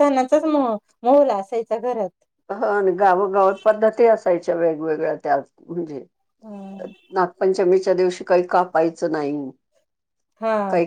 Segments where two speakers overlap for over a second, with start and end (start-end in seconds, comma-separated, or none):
none